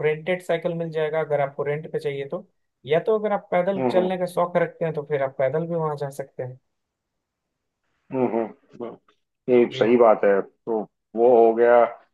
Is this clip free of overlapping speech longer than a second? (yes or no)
yes